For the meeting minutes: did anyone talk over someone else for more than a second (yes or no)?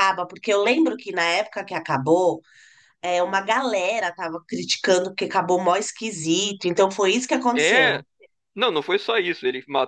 no